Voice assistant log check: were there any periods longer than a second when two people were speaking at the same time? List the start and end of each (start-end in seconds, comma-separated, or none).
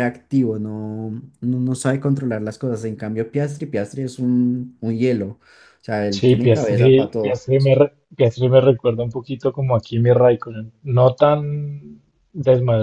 6.1-7.4